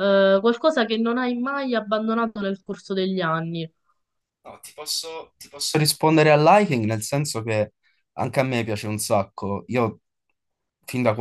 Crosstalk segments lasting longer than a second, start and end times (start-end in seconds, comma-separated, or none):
none